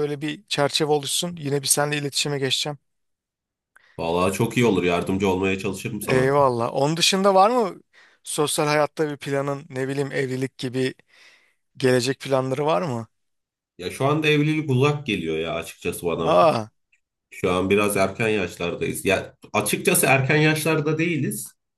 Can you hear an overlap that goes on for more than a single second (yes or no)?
no